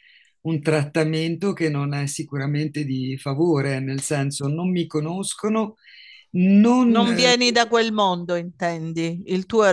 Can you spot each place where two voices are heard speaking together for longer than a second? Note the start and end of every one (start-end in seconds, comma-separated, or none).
none